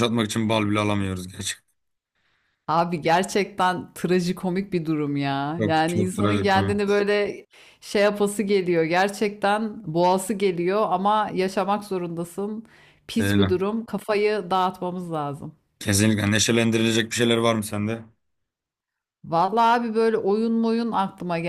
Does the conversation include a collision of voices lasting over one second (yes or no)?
yes